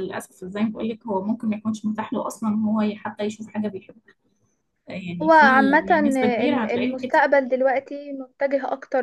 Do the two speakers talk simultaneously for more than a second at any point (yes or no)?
yes